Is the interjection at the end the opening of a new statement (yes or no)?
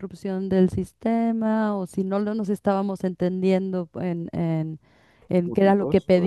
no